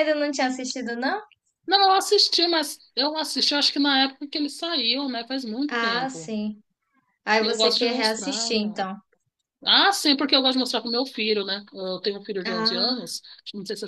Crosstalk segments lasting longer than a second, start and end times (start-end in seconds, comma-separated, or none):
7.4-8.8